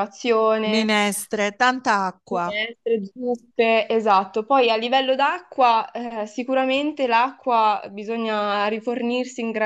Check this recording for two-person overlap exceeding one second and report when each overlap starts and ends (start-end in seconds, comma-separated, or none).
none